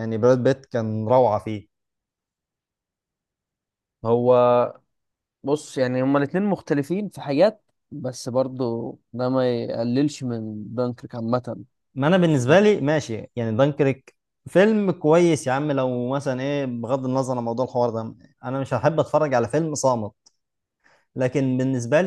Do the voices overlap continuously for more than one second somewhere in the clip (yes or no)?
no